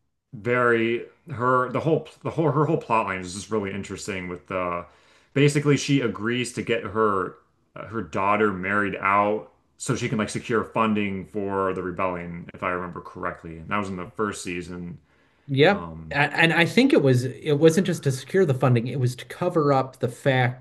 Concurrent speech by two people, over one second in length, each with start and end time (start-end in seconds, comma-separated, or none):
none